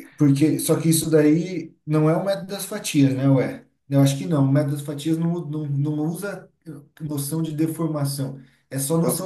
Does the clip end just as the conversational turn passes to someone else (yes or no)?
no